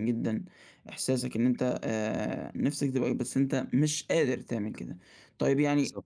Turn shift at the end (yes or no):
no